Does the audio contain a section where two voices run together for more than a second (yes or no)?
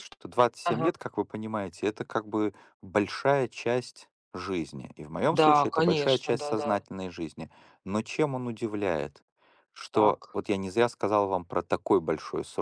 yes